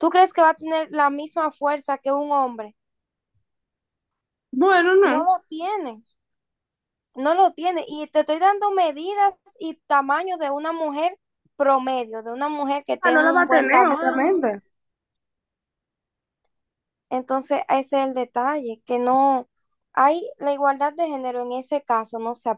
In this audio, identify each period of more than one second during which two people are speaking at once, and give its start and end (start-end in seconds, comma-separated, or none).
13.1-14.4